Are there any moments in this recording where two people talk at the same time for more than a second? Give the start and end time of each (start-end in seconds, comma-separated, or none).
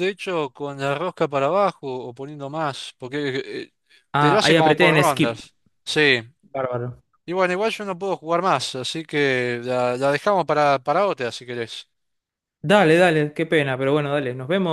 4.2-5.4